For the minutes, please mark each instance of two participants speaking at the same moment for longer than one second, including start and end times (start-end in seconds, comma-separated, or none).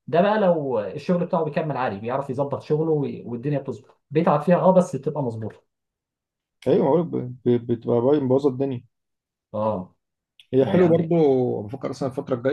none